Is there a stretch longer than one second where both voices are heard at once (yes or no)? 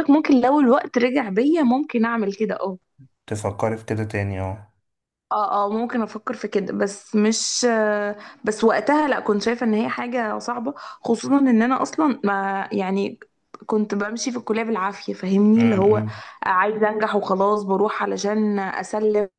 no